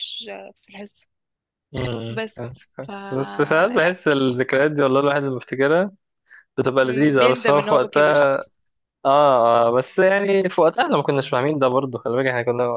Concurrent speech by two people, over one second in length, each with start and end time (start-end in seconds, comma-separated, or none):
6.8-8.2